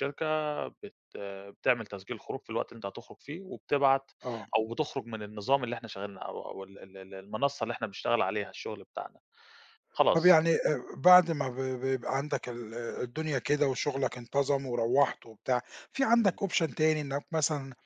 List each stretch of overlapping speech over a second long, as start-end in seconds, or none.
none